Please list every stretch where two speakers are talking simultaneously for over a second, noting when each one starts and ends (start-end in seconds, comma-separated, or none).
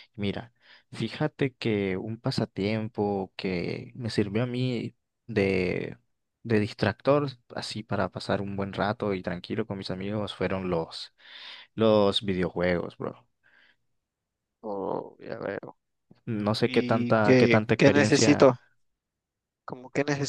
16.6-18.5